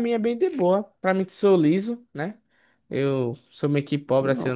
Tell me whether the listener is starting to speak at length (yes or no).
no